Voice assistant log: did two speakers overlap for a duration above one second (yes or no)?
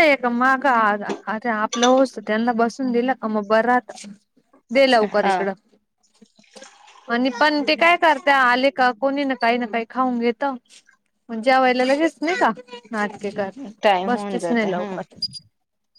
yes